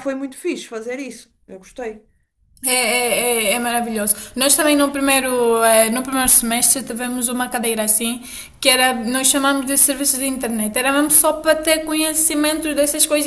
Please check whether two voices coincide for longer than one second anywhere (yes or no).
no